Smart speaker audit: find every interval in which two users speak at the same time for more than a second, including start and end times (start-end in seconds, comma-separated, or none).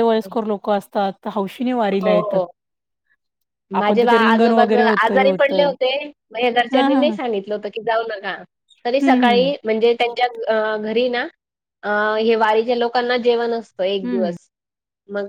3.8-5.7